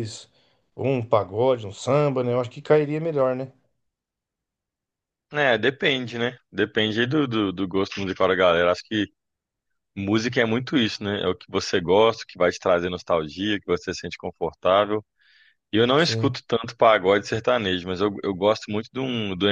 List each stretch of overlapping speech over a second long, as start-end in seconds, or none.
none